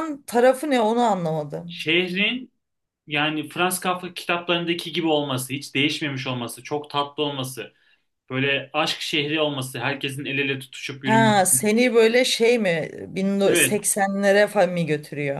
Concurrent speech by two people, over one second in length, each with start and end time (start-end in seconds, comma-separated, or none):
none